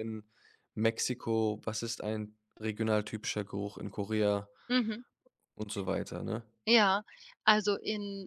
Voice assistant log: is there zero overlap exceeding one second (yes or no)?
yes